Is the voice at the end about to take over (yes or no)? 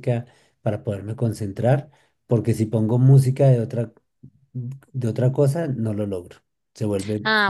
yes